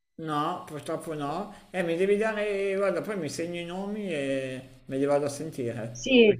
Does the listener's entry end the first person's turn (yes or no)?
yes